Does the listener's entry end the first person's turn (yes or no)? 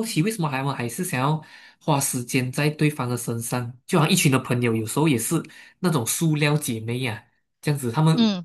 no